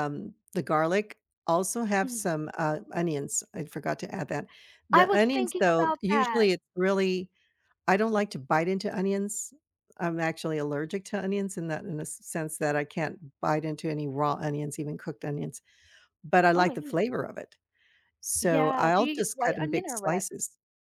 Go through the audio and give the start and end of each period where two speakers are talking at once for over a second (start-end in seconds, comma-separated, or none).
4.9-6.5, 18.4-20.2